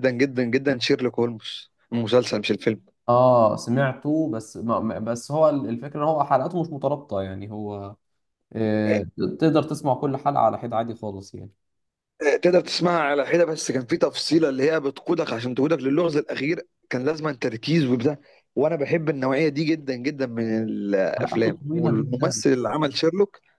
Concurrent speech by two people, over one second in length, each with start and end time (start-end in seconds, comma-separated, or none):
21.2-22.4